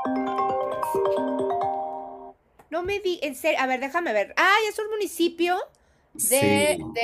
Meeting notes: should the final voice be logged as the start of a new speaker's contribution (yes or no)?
no